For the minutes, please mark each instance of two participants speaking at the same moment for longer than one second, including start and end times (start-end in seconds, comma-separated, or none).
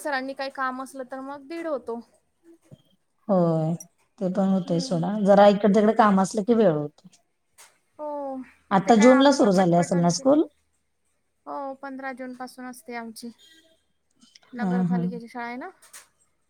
8.8-10.3